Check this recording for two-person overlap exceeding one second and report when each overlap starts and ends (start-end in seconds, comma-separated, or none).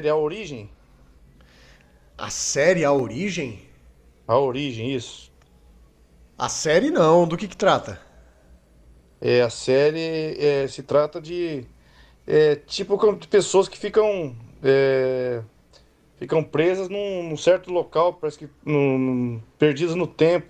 none